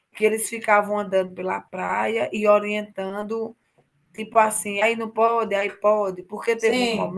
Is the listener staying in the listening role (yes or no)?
no